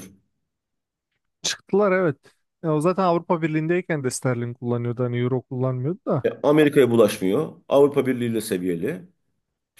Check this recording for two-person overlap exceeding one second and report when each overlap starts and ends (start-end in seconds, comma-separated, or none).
none